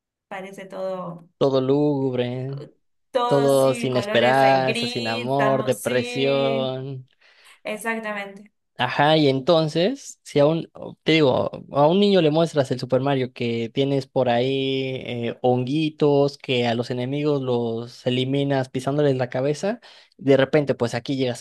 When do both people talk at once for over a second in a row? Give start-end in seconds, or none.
3.3-6.8